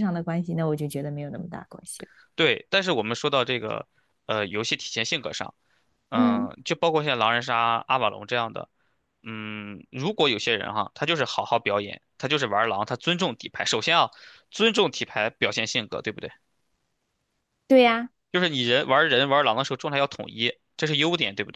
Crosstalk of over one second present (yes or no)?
no